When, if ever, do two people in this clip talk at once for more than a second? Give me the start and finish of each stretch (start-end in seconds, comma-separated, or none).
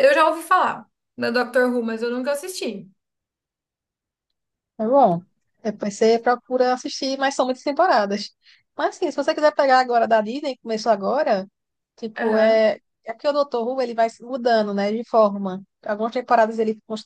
none